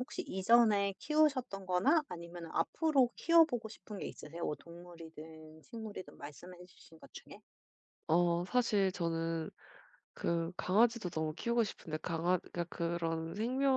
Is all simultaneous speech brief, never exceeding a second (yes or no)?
yes